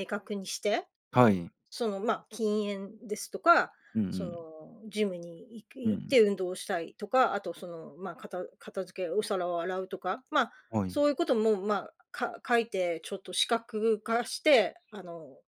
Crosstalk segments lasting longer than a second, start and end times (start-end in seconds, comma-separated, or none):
none